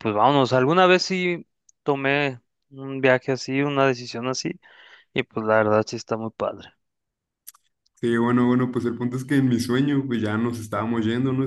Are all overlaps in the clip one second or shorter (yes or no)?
yes